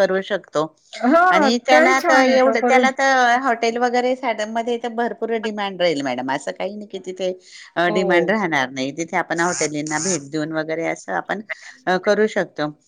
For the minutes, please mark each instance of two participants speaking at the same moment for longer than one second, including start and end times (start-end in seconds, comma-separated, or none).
1.3-2.9